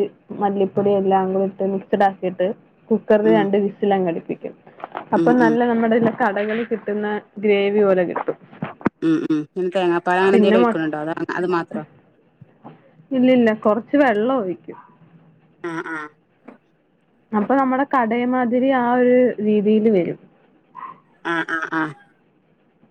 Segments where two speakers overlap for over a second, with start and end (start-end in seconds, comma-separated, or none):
none